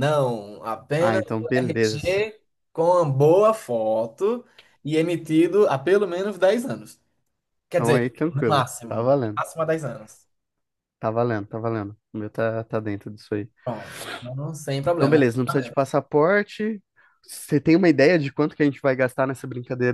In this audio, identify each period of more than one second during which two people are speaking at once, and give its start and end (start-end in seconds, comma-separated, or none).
1.0-2.2, 7.7-9.4